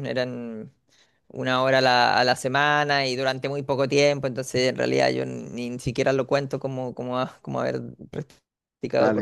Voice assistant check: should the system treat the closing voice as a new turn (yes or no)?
yes